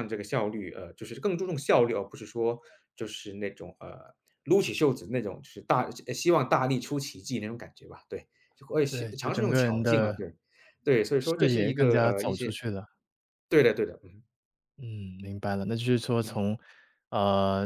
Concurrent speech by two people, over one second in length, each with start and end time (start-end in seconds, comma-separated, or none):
8.9-10.2, 11.2-12.6